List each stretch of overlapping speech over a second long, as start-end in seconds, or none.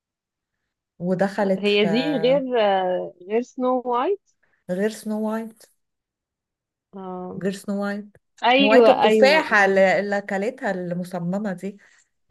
8.6-9.8